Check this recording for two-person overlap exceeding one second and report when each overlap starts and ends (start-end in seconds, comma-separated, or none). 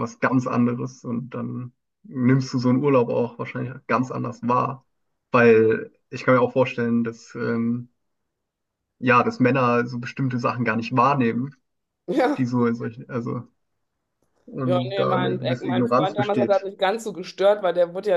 14.7-16.7